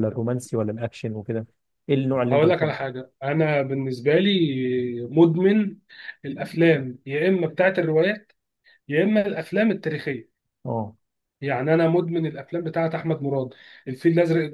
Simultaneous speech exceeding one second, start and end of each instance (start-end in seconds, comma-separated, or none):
none